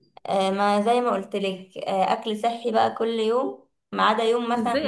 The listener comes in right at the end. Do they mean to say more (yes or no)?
yes